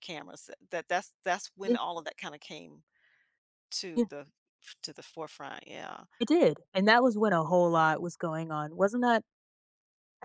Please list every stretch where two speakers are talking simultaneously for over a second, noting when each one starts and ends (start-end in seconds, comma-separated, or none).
none